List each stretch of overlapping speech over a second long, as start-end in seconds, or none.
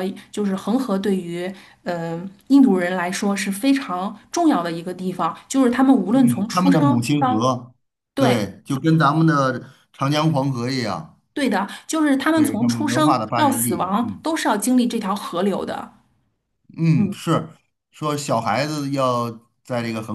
6.1-7.5, 12.3-14.2